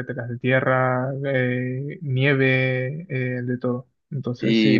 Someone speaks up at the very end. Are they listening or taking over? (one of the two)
taking over